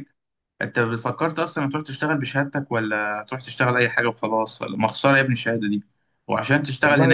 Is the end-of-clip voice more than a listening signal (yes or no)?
no